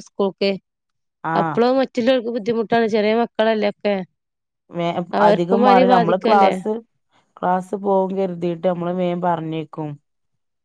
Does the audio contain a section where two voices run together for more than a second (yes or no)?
yes